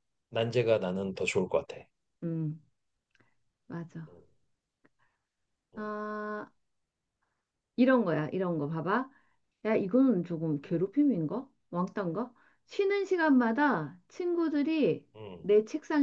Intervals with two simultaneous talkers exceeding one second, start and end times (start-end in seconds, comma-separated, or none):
none